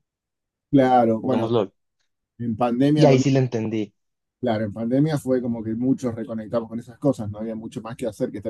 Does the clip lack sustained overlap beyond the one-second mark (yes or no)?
yes